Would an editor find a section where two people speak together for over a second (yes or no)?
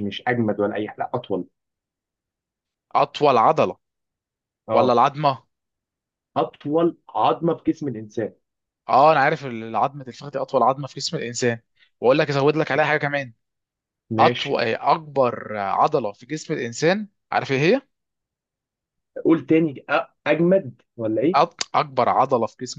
no